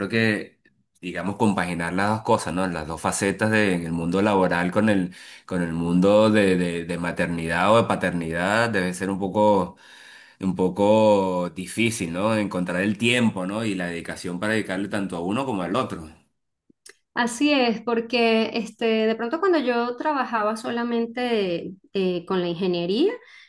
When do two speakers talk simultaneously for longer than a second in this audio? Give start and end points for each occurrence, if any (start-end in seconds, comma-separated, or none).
none